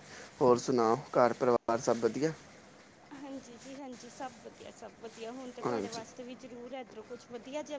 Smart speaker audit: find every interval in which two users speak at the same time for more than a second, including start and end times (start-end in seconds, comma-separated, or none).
none